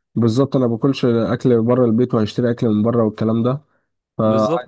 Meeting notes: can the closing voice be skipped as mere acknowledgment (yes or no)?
yes